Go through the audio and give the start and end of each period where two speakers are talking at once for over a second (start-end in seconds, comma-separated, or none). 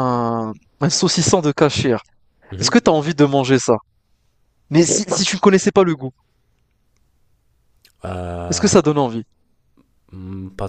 none